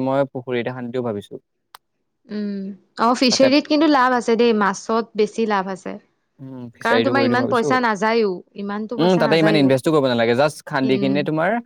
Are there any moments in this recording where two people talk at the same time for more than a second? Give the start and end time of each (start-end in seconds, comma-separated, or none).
6.8-9.7